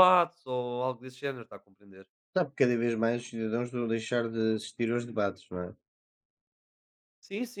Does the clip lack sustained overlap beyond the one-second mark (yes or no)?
yes